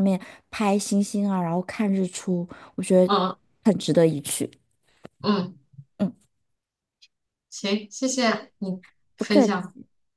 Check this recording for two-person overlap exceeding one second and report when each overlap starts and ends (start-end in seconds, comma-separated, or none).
none